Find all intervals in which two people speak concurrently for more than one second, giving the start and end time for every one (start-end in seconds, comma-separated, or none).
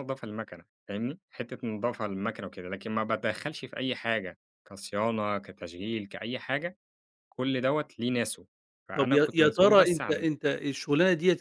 8.9-10.3